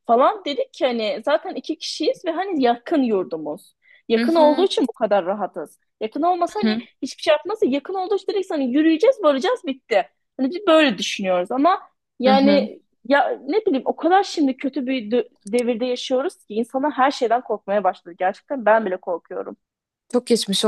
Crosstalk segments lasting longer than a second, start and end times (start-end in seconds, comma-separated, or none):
none